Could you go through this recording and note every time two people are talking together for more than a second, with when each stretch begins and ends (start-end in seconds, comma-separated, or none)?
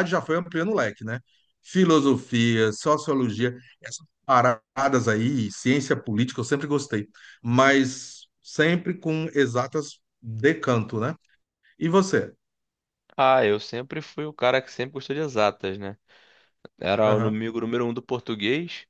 none